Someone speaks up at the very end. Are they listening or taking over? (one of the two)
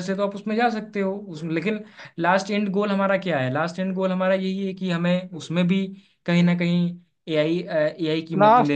taking over